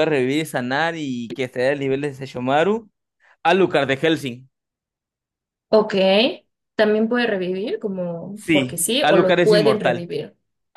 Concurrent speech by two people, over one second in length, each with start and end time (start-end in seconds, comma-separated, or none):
8.3-10.1